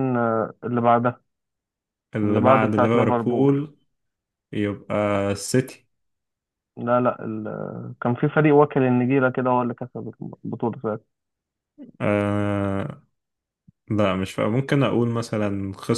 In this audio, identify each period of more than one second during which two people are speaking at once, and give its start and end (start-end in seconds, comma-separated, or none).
2.2-3.5